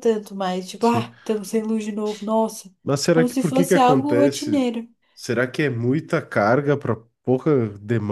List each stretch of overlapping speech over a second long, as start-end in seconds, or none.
3.1-4.7